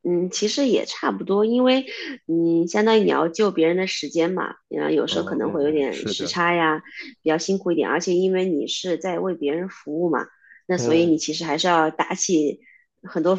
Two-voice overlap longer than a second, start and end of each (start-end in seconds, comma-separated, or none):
5.1-6.3